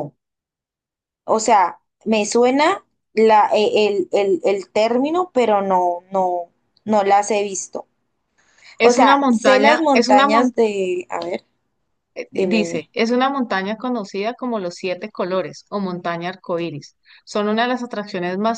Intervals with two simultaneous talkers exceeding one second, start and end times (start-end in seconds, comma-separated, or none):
8.8-10.6